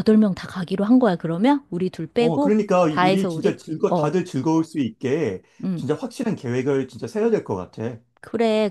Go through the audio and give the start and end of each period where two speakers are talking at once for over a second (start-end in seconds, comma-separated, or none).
2.2-4.1